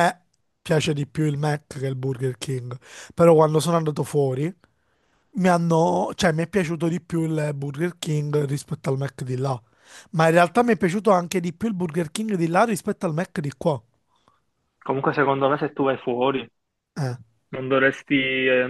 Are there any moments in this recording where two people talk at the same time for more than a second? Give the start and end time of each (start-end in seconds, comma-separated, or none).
none